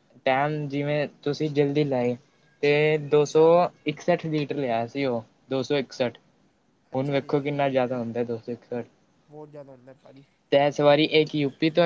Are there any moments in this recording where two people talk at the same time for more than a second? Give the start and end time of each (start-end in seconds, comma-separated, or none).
none